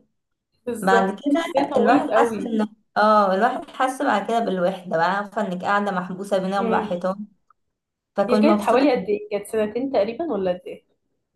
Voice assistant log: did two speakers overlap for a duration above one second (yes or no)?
yes